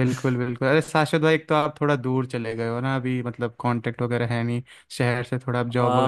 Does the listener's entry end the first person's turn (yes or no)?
yes